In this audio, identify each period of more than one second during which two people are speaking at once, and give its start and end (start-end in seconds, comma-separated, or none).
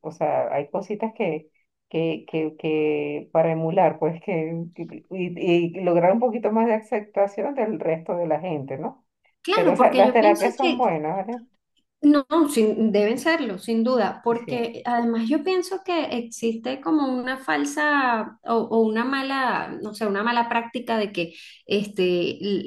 9.5-10.8